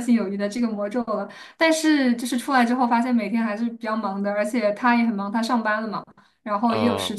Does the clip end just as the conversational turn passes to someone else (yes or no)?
no